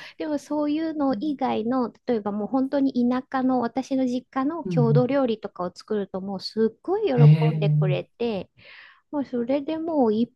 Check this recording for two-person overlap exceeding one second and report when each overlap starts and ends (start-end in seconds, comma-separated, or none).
none